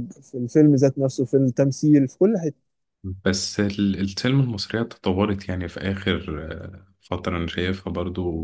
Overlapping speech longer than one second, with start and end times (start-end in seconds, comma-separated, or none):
none